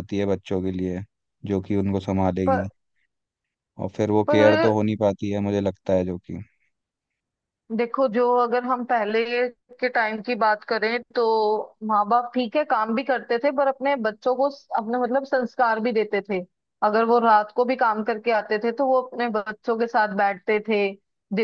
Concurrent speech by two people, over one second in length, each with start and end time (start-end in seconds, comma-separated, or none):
none